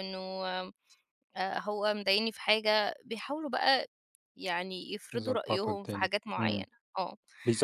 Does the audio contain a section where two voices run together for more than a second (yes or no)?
yes